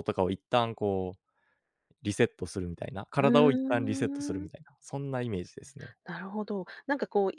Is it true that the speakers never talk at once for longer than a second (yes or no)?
no